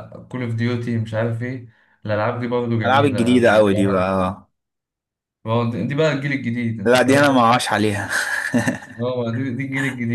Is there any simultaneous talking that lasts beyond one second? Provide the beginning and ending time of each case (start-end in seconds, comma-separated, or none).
2.8-4.1